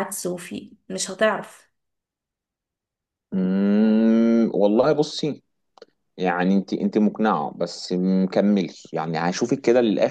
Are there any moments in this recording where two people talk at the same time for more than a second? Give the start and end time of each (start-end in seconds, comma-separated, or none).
none